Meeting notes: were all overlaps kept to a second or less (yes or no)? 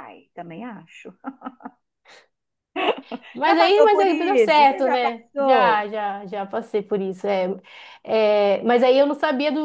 no